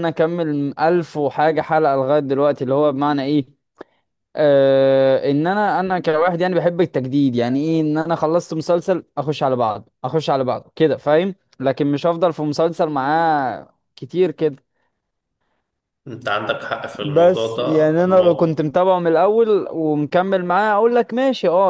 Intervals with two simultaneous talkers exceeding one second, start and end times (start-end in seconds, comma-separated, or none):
17.0-18.6